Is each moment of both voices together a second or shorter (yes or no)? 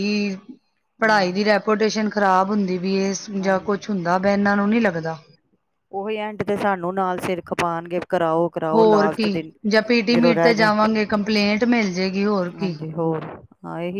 yes